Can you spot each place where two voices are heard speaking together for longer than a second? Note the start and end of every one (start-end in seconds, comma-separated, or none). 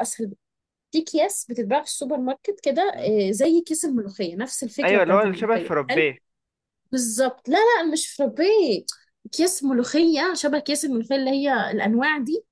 4.8-6.1